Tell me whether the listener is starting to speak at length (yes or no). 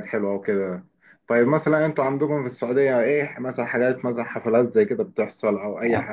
yes